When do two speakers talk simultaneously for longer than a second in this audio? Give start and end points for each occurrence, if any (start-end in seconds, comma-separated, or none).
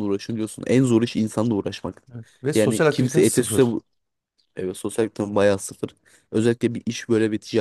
2.5-3.8